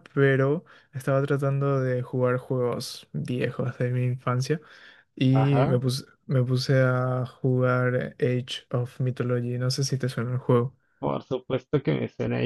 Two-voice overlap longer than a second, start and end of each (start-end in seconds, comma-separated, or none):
none